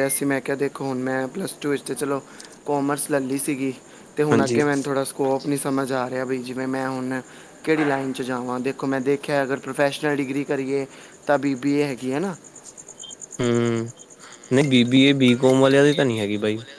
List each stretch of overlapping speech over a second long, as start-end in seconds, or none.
none